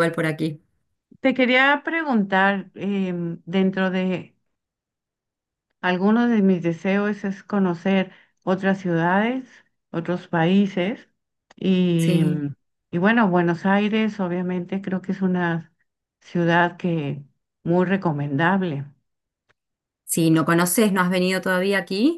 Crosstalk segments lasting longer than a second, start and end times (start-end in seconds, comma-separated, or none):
none